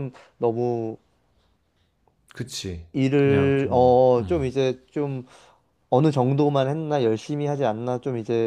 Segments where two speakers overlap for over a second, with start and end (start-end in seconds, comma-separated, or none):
2.9-4.5